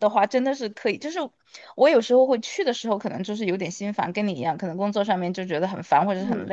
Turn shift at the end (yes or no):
no